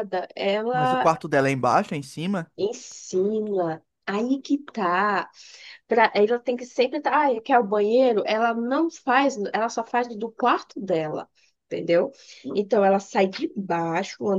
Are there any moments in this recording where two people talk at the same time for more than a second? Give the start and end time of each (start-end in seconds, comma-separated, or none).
none